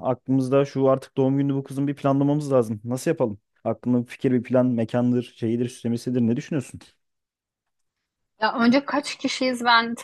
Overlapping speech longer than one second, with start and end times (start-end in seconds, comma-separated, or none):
none